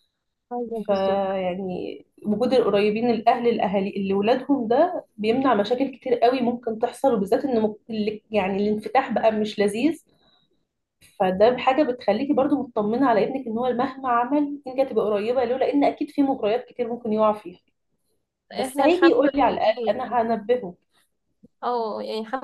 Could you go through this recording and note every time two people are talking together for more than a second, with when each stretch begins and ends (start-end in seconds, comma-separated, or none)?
18.6-20.0